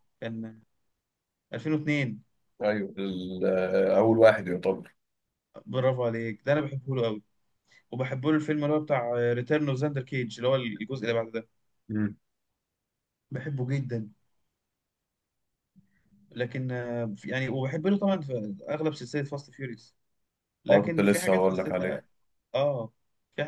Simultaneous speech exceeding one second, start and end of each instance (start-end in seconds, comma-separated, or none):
20.7-22.0